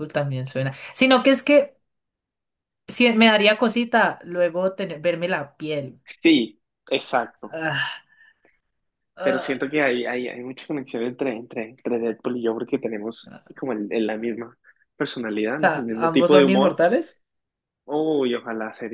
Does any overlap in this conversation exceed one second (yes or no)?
yes